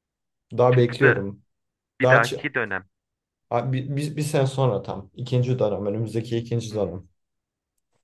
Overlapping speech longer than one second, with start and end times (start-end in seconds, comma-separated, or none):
none